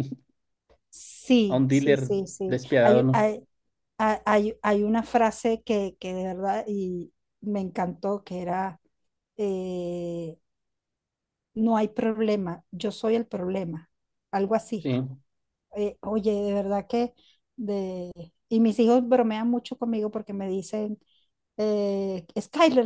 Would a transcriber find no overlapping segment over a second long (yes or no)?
no